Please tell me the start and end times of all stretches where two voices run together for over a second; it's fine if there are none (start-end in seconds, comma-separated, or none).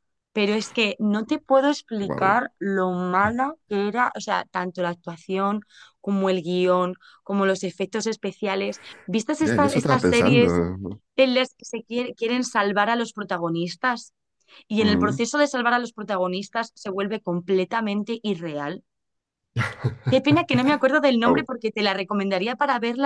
9.4-10.6